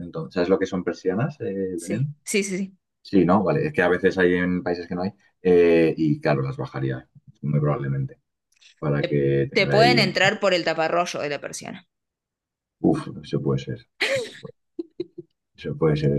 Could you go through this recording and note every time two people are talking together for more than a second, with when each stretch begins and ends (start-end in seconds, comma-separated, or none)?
9.0-10.3